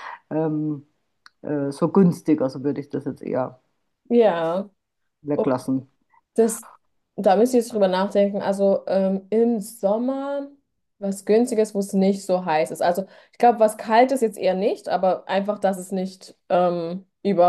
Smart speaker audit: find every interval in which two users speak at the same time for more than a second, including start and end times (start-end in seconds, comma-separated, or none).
none